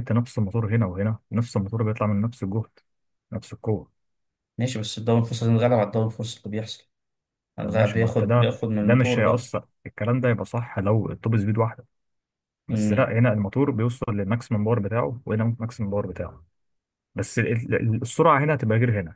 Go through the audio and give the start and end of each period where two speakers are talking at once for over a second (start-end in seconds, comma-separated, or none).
7.6-9.5